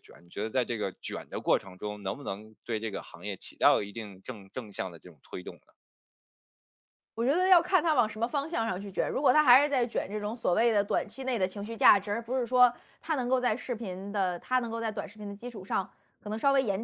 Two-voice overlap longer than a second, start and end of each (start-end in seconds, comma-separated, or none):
none